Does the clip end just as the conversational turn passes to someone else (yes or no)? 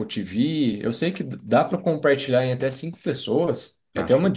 no